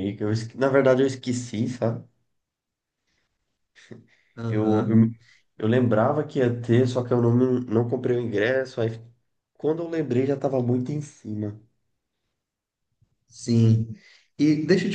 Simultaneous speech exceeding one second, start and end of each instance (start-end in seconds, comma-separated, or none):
none